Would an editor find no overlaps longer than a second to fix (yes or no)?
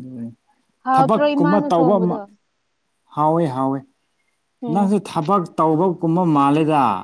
no